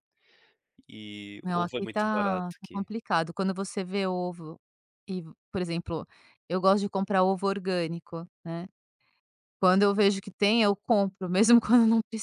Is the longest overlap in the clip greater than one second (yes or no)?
yes